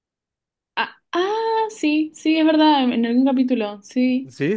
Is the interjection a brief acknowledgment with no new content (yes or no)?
no